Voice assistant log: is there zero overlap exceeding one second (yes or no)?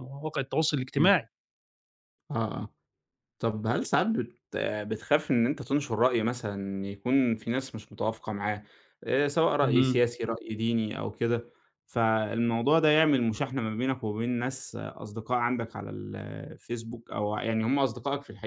yes